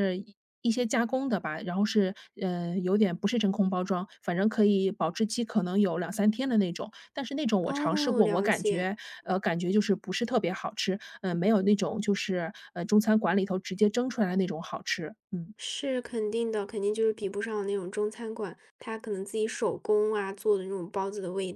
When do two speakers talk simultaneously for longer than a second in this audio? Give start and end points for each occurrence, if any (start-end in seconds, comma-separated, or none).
7.6-8.9